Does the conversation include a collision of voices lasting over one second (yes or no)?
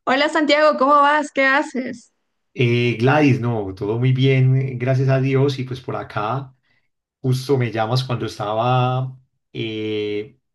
no